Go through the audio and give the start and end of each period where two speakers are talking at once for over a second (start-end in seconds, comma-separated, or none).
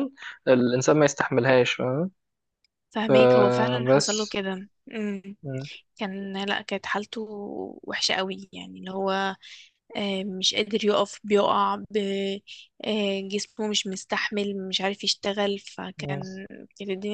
3.1-4.4